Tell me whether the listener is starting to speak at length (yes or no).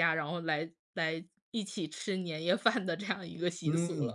yes